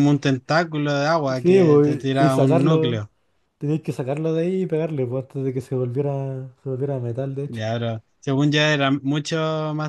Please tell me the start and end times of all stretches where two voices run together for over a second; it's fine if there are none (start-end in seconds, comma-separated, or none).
1.3-3.0